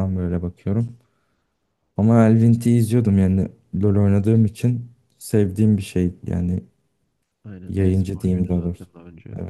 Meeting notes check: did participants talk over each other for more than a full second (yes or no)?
yes